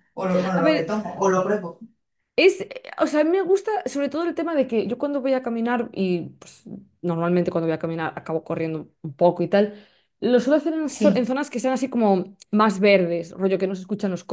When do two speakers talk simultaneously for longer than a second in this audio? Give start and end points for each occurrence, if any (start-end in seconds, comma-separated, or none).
none